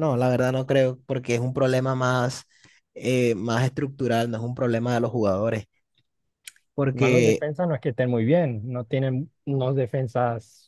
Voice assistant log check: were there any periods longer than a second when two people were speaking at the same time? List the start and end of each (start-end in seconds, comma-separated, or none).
none